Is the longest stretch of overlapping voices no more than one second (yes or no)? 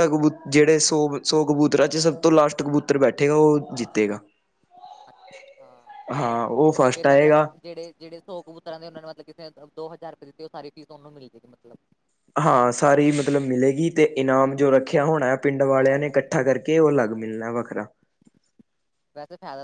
yes